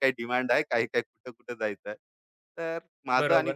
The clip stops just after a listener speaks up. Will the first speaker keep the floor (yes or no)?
no